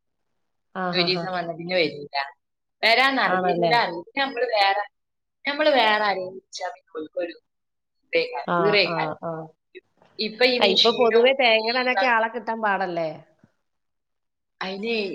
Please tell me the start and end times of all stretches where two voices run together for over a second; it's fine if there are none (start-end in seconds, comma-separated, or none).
10.6-12.1